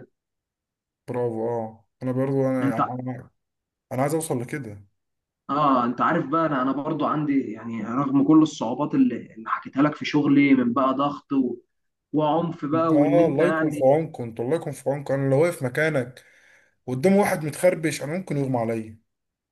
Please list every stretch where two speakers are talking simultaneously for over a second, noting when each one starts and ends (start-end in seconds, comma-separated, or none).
12.7-14.0